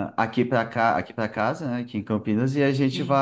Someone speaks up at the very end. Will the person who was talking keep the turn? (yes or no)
yes